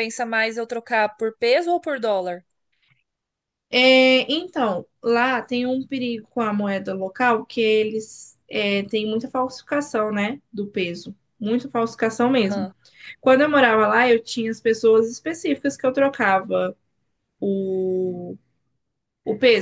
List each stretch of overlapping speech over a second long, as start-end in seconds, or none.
none